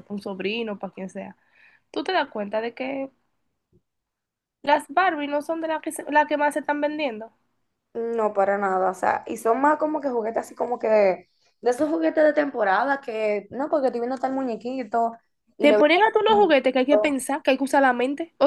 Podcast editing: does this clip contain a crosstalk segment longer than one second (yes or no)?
yes